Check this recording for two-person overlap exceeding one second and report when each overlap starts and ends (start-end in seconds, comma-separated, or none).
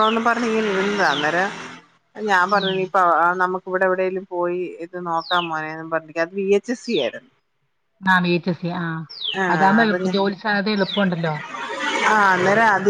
none